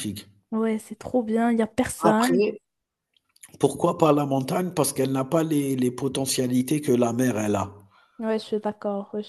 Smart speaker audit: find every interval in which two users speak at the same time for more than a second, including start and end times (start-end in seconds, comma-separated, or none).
none